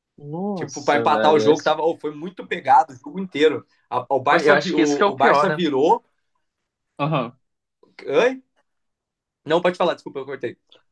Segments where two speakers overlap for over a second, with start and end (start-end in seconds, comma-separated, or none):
0.5-1.8, 4.3-5.6